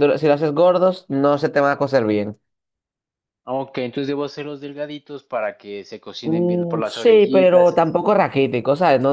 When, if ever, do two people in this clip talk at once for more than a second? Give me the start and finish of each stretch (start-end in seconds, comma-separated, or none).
6.2-8.3